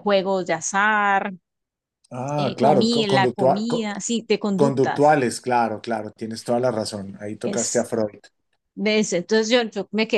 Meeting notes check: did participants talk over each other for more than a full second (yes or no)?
yes